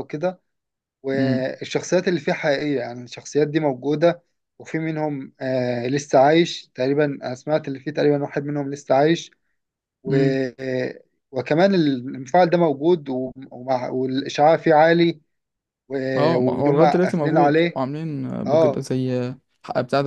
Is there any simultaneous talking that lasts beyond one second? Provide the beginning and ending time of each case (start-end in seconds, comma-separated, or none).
16.2-17.8